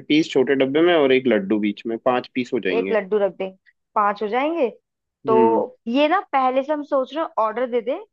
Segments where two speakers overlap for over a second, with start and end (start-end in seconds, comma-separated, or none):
none